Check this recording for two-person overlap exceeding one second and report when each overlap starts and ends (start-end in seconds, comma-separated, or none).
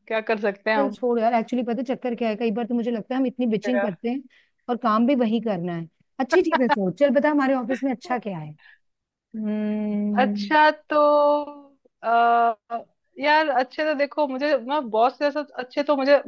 none